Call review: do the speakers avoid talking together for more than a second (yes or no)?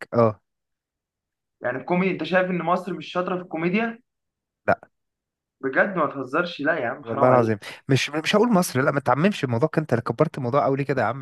yes